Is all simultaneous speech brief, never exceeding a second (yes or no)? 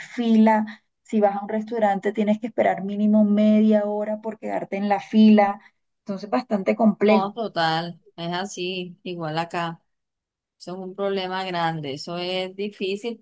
yes